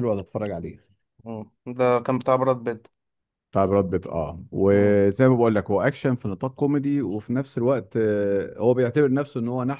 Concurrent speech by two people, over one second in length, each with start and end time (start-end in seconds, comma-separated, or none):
none